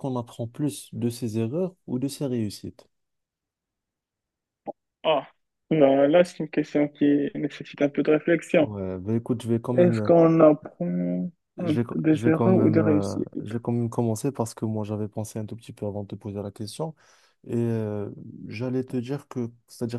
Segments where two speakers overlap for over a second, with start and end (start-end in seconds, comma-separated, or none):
11.6-13.3